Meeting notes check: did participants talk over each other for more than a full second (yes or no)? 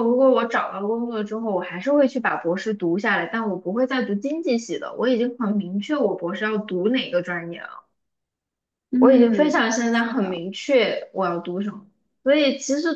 yes